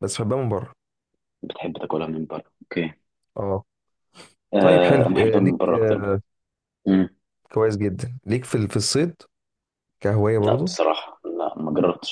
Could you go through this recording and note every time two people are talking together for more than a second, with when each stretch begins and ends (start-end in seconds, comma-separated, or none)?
4.6-6.1